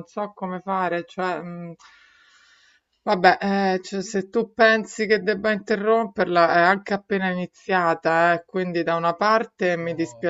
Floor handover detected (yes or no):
no